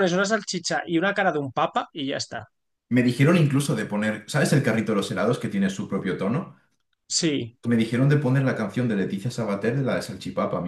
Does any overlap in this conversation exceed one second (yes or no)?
no